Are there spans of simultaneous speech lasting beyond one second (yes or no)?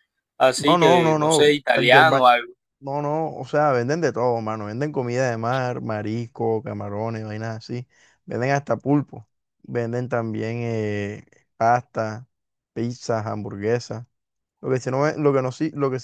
yes